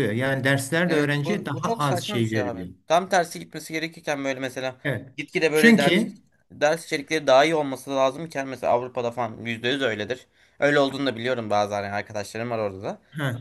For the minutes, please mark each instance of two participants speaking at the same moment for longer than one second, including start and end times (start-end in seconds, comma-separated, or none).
0.9-2.7